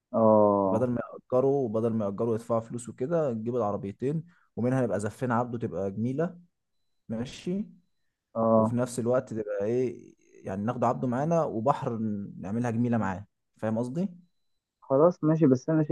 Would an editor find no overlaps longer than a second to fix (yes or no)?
yes